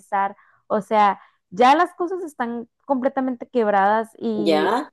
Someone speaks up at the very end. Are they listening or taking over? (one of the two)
taking over